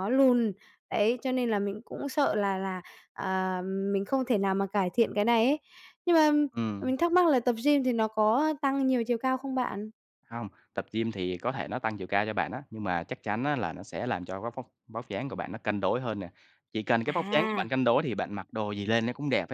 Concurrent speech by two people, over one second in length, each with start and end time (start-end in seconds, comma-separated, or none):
none